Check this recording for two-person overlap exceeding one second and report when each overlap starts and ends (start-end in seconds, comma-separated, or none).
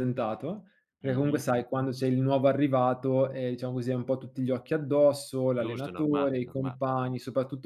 5.5-6.8